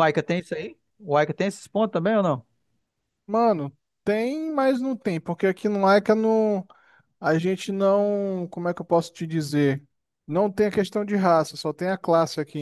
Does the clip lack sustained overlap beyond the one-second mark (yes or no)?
yes